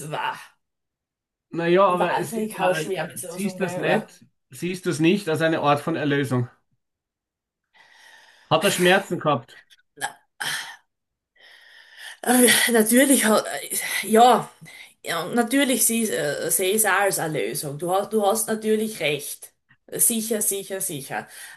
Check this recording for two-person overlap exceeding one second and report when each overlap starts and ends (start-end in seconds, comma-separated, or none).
1.9-4.1